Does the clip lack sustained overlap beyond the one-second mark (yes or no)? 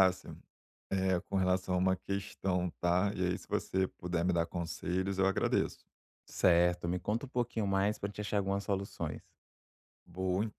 yes